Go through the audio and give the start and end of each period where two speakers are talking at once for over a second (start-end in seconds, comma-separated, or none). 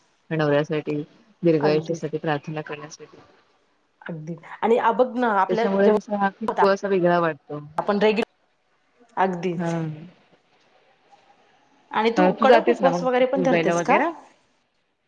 12.2-14.0